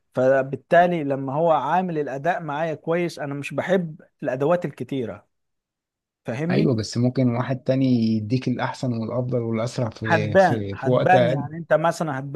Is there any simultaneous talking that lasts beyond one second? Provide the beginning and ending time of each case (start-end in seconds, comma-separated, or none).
10.1-11.5